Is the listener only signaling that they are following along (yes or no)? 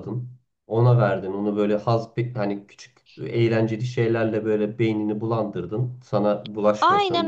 no